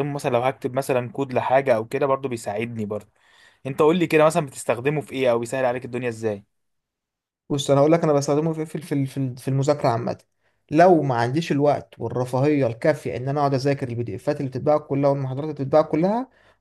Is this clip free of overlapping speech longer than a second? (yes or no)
yes